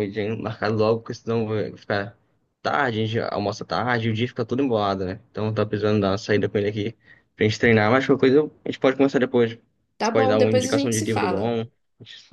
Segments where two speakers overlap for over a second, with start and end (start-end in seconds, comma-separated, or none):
10.0-11.6